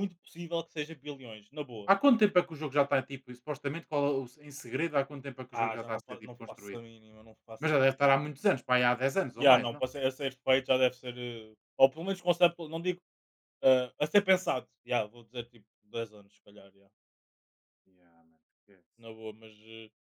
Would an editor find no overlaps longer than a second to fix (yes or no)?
no